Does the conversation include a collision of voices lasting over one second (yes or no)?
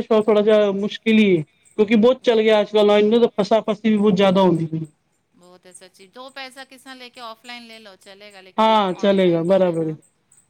yes